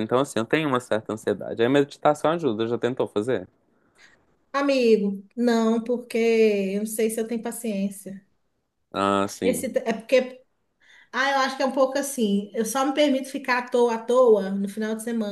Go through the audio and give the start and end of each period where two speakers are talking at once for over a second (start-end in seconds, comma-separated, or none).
none